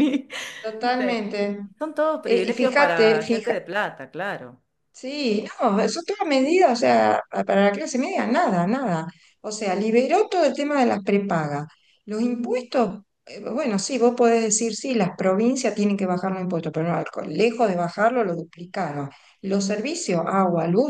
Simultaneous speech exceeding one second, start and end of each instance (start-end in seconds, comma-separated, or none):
2.2-3.6